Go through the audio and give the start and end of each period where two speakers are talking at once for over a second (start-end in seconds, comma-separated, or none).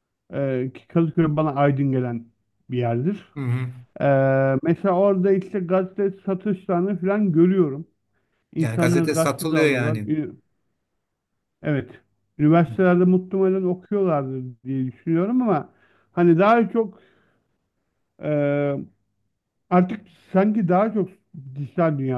8.6-10.1